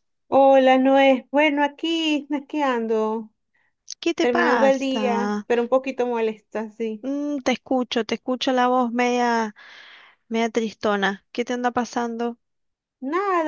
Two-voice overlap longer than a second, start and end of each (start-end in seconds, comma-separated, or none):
4.2-5.5